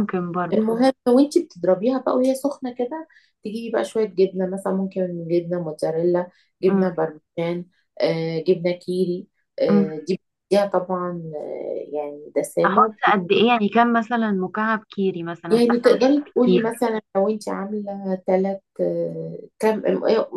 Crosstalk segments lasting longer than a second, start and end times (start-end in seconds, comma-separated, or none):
15.5-16.7